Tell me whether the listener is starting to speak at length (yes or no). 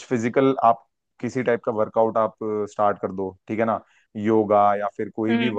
no